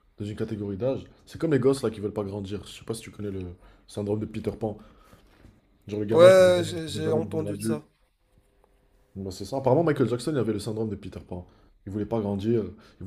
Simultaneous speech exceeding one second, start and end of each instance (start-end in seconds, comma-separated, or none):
6.1-7.8